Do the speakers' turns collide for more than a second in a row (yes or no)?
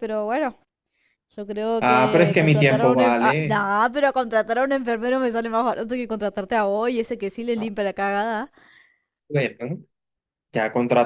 yes